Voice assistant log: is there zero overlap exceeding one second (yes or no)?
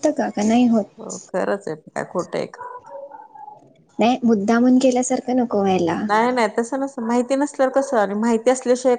yes